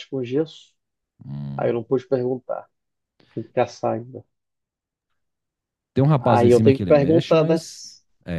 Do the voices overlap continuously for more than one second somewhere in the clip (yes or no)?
yes